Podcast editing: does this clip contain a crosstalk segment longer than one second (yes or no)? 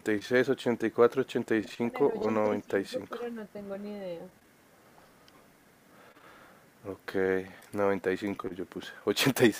yes